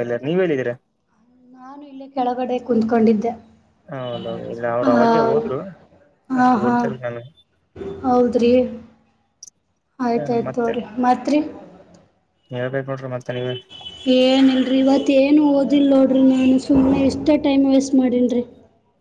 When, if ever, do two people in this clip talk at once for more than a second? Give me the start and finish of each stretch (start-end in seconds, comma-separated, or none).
none